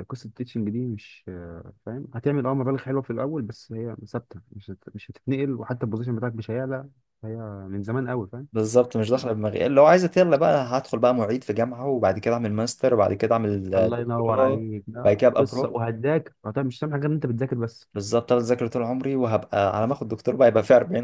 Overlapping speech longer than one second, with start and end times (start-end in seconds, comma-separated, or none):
13.8-15.7